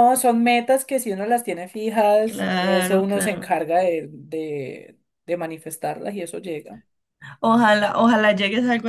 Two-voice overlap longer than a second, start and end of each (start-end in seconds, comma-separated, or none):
2.2-3.5